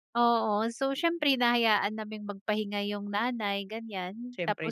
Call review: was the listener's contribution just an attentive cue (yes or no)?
yes